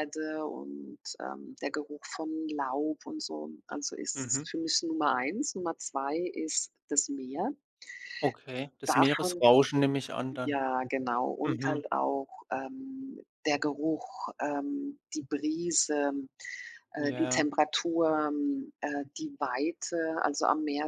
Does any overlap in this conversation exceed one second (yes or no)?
no